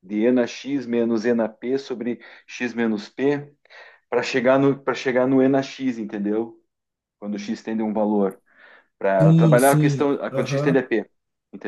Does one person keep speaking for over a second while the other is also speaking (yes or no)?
yes